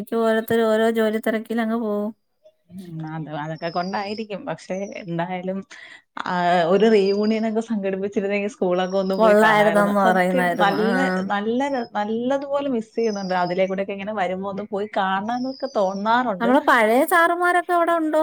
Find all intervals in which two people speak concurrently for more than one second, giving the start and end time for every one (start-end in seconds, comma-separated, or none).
9.2-10.9